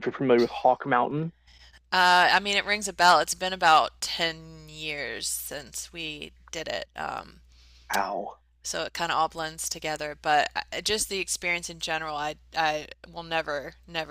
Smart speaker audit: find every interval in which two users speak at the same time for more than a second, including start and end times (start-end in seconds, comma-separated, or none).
none